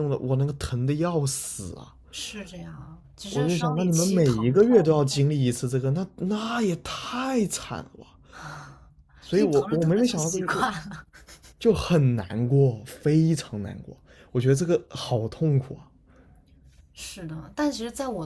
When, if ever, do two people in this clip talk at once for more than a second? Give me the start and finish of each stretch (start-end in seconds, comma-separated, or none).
3.3-5.0, 9.3-10.7